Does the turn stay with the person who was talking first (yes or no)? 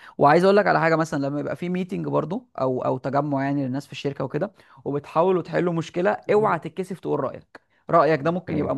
yes